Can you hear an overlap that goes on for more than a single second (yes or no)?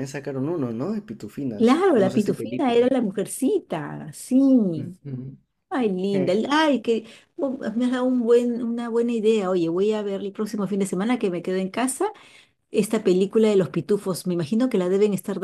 yes